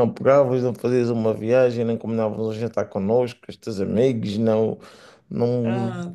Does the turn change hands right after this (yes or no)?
yes